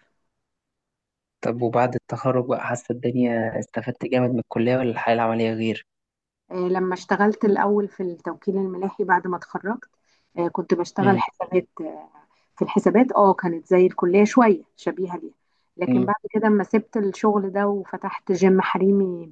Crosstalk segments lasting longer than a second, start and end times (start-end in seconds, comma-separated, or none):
none